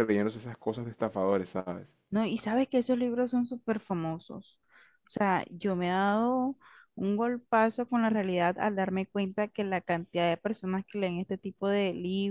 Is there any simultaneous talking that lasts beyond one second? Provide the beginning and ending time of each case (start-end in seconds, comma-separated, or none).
none